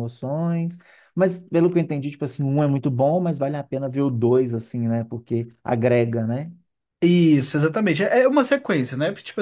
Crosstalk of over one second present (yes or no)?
no